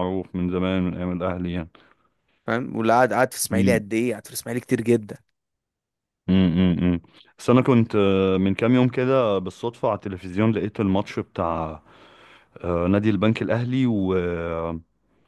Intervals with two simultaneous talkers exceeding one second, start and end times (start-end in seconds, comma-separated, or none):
none